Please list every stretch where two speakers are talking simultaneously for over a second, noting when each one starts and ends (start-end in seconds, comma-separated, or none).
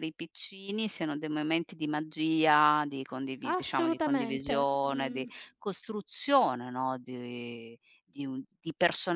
3.4-5.3